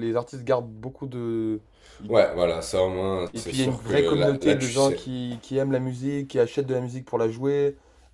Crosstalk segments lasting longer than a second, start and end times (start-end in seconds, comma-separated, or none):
3.3-5.1